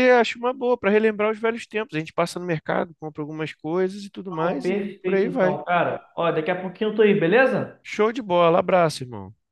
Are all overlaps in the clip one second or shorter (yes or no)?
no